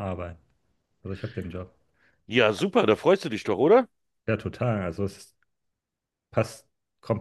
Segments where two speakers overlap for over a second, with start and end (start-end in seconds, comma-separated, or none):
none